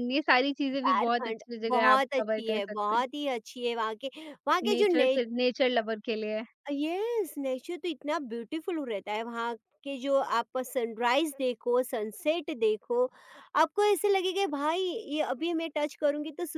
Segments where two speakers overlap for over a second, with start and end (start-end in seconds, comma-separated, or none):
0.8-3.0